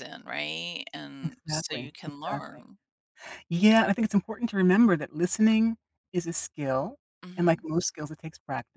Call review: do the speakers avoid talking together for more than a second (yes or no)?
no